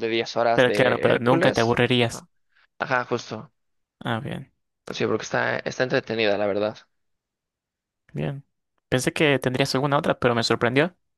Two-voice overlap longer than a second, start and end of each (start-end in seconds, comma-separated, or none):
0.5-2.3